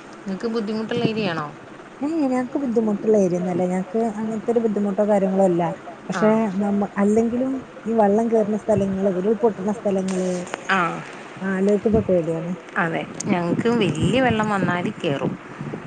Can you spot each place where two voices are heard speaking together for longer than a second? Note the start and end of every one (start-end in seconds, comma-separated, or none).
none